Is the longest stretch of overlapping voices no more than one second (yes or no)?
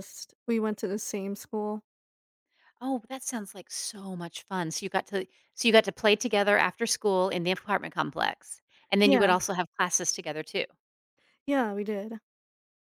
yes